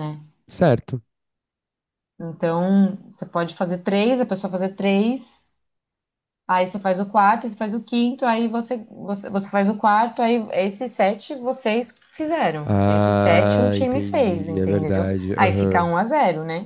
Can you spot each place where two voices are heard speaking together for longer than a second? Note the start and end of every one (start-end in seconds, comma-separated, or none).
12.7-15.9